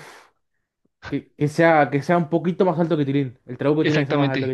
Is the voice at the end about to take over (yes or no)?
yes